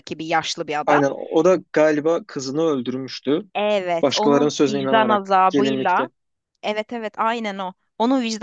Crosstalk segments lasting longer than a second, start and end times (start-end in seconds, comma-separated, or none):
4.0-6.1